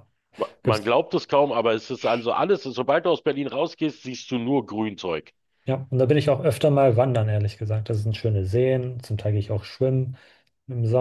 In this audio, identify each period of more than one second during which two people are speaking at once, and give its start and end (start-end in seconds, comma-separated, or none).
none